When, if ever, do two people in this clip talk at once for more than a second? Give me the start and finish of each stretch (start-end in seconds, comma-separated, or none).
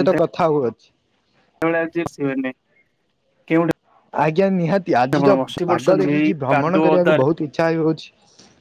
5.7-7.3